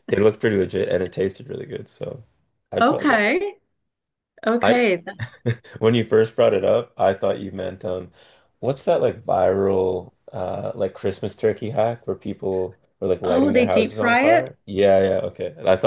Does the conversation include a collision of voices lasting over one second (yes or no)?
yes